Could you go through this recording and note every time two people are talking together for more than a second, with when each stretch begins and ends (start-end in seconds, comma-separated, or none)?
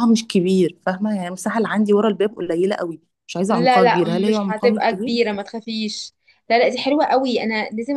3.5-5.1